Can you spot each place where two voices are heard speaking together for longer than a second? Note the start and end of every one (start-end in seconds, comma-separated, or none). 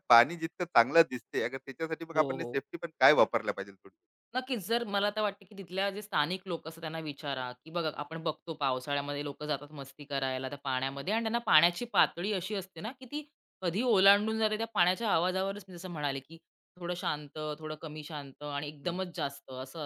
none